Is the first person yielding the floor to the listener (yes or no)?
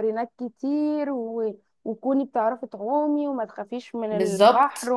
no